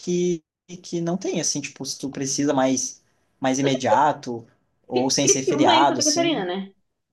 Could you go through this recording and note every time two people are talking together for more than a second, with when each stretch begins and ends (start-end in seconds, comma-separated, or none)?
4.9-6.4